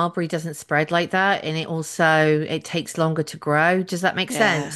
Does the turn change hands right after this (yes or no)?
yes